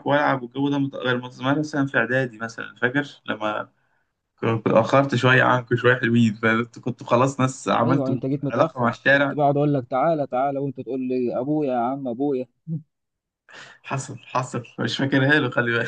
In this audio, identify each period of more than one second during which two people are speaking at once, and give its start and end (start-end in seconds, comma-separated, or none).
7.8-9.4